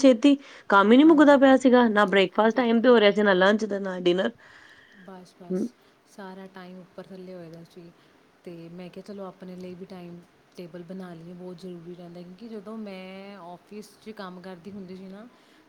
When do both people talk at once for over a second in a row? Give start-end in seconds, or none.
1.0-2.5